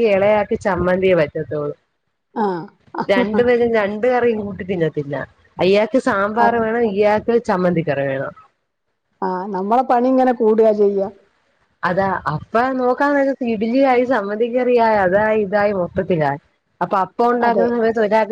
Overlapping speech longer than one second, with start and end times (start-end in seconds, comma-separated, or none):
none